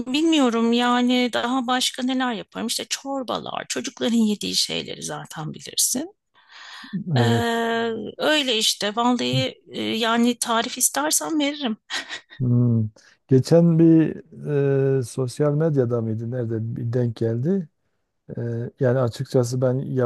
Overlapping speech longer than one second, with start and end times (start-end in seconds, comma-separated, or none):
none